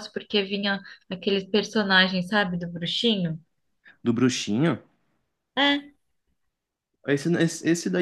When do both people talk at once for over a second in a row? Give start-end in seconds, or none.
none